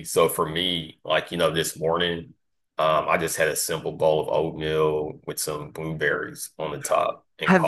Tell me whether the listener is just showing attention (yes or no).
no